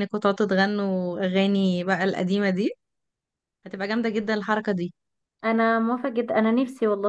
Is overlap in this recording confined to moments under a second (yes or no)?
yes